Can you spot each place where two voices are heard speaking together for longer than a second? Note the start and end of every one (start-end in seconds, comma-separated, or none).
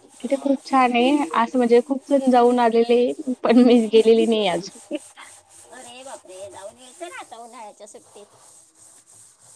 none